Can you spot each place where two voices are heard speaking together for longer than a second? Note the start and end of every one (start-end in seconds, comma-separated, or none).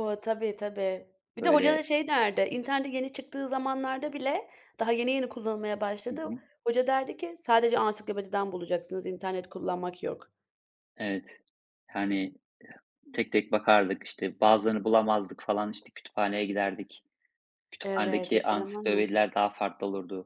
17.8-19.1